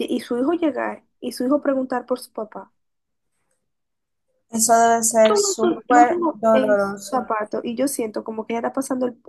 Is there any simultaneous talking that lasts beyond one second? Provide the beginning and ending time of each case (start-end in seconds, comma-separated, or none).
5.3-7.2